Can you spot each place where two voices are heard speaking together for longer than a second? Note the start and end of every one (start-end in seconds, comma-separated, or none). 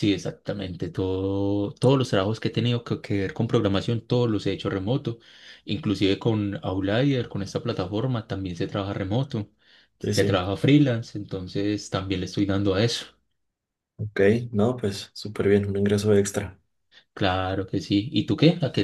none